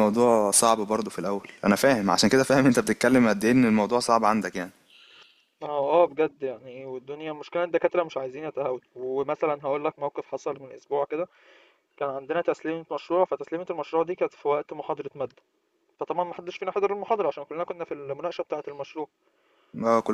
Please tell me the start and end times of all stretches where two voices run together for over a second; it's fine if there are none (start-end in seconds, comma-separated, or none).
none